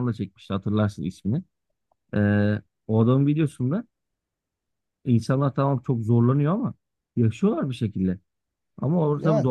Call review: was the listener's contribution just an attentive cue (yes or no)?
yes